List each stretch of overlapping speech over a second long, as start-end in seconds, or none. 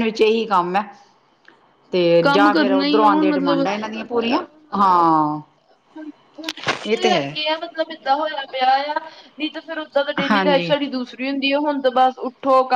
2.2-3.6